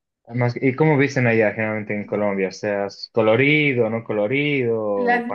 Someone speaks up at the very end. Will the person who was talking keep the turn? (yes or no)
no